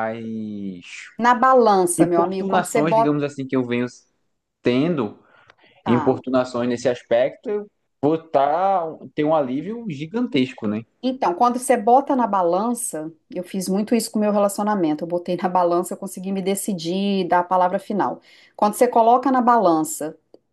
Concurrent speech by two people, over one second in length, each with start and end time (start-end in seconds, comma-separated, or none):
2.0-3.2